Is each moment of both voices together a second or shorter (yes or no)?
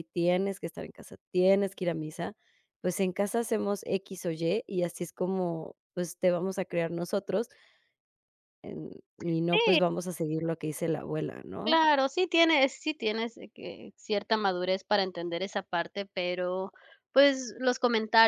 yes